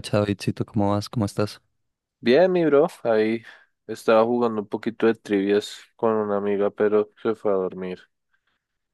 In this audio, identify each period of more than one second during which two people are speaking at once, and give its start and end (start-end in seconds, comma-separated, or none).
none